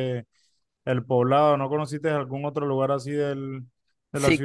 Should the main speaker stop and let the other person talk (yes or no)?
yes